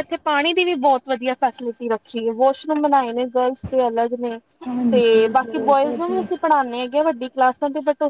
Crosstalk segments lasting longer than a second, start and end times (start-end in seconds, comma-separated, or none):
4.9-6.3